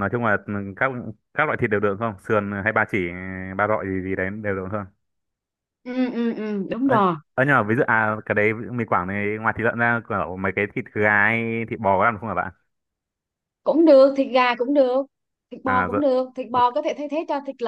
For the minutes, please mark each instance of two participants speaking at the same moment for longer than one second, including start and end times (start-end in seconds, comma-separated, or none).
none